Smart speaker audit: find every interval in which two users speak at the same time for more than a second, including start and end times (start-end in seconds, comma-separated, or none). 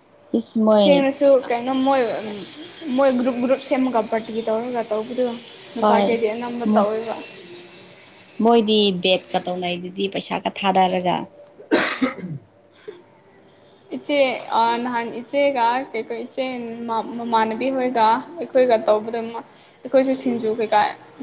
none